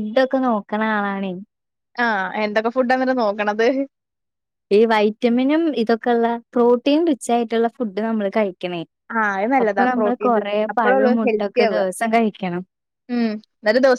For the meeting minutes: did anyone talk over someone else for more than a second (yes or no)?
yes